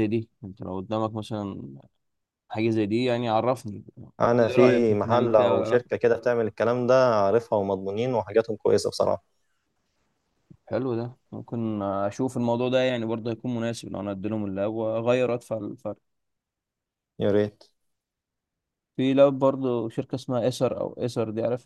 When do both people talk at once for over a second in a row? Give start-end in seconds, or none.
4.2-5.8